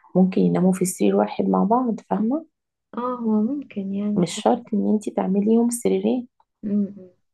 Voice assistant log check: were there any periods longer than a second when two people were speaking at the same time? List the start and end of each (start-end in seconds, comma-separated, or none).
none